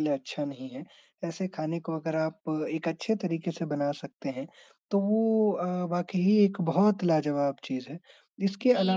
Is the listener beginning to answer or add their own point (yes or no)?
yes